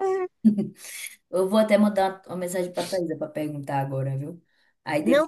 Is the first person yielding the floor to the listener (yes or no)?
yes